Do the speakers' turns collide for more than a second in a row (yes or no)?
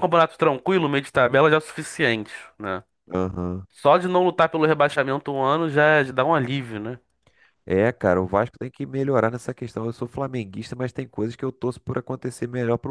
no